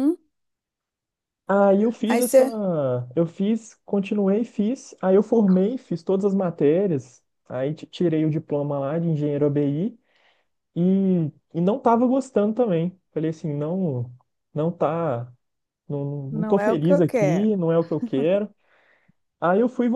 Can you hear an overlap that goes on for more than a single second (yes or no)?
yes